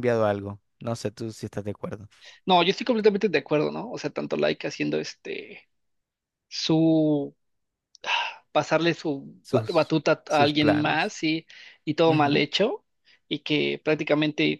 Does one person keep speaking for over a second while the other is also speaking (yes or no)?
yes